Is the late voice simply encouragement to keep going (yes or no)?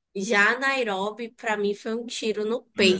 no